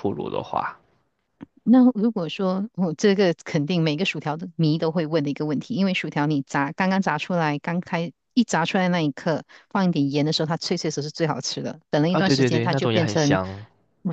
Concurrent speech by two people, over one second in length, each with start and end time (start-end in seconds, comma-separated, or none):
12.1-13.4